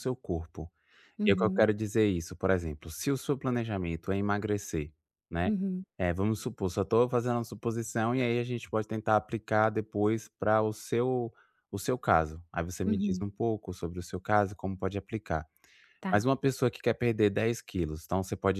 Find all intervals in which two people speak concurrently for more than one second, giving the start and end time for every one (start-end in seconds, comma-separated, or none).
none